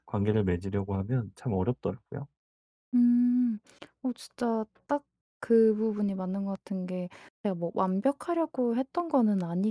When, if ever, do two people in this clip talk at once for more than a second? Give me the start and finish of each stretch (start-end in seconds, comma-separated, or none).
none